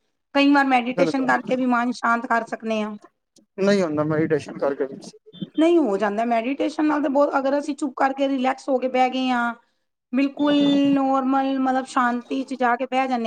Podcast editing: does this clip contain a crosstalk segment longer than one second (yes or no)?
no